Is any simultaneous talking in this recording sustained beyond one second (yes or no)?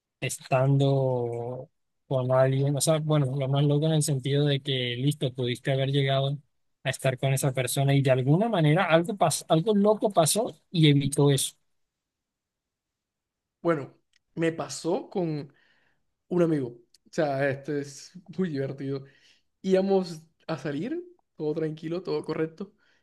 no